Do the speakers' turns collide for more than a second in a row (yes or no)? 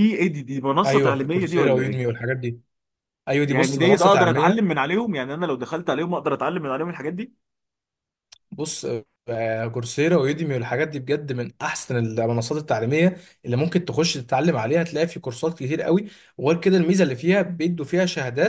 yes